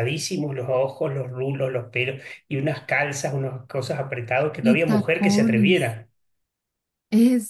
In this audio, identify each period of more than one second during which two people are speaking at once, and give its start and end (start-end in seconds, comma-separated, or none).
4.6-6.0